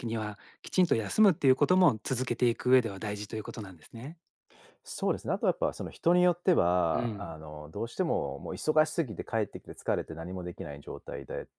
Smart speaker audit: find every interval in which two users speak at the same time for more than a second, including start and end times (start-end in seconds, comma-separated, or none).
none